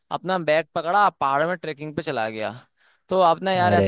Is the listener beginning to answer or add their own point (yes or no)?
no